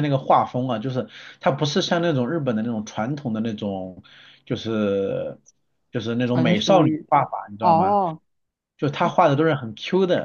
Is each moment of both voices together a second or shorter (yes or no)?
no